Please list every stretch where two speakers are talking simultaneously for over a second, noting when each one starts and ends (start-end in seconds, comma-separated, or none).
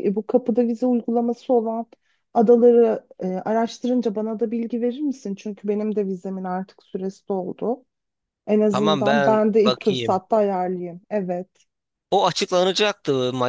8.7-10.2